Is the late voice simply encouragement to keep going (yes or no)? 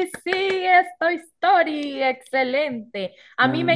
yes